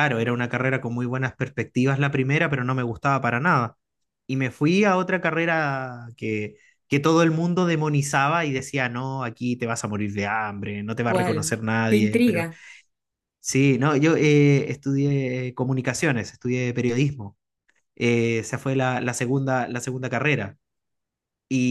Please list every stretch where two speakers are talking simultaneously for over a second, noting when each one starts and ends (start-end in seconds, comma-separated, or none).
11.1-12.5